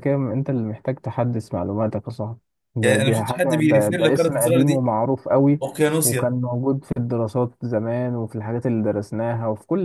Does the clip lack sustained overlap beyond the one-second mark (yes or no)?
no